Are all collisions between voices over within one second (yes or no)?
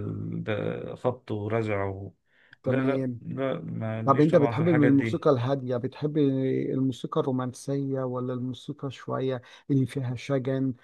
no